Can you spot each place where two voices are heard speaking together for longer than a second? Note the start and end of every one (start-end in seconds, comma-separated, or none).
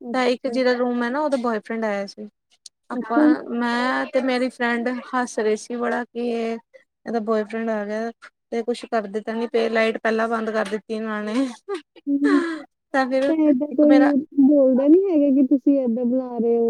none